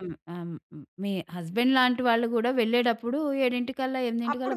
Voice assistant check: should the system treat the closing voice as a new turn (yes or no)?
yes